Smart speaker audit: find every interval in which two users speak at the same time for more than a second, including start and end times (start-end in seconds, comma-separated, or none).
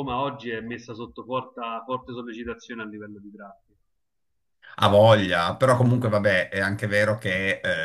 none